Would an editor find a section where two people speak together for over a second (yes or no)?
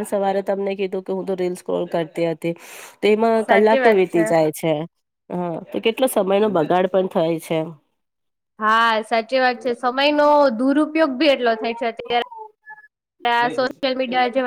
no